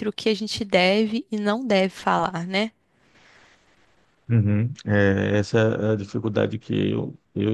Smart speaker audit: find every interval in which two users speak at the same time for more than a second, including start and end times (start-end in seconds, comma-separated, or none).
none